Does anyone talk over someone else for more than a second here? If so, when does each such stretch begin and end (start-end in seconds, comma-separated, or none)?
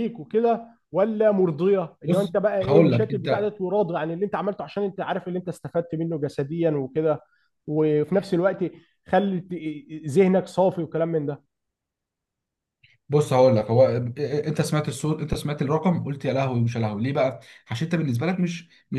2.0-3.5